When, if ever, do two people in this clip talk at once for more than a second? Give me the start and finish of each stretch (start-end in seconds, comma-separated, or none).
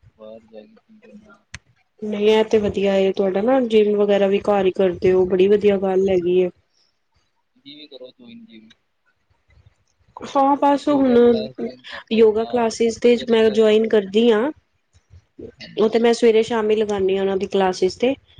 12.1-13.7